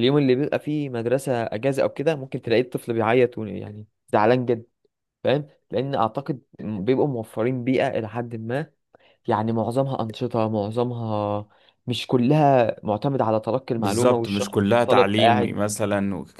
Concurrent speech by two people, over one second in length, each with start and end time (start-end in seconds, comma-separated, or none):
13.8-15.6